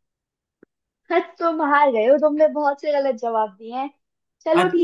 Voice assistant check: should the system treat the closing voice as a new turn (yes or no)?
no